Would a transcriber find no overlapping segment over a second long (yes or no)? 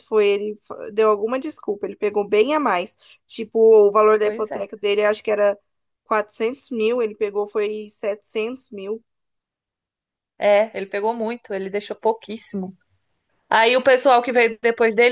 yes